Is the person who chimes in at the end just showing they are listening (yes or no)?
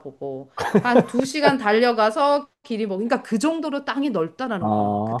no